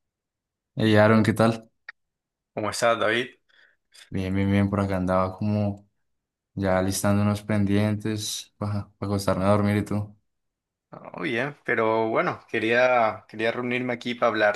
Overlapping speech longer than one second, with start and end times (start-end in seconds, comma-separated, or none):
none